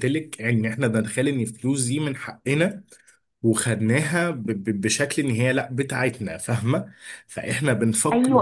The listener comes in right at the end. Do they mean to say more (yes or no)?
yes